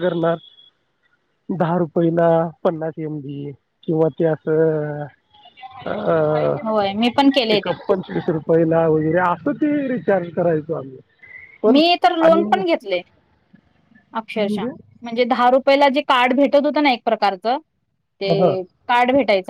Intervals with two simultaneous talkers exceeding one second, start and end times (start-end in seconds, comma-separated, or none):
none